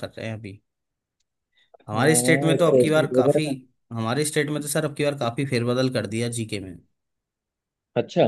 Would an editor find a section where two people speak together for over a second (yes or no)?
yes